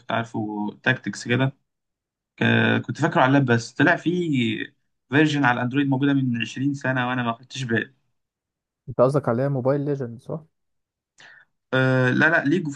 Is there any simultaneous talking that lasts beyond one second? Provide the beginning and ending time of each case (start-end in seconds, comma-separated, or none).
none